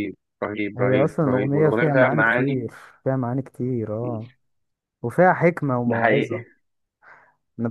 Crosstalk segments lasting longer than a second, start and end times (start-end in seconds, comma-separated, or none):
0.8-2.7